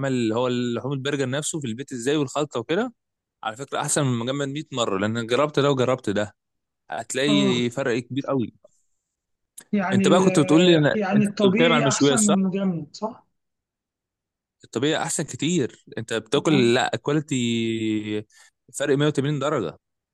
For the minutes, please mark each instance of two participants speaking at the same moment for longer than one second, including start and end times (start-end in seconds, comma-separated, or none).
9.9-12.3